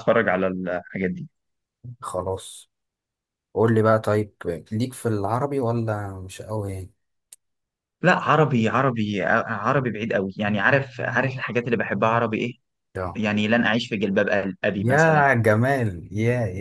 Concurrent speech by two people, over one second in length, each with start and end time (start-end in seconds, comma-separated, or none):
none